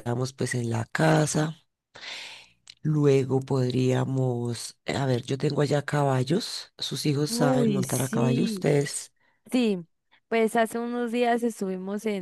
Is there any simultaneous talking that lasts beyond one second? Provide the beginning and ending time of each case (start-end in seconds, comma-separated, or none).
7.3-8.7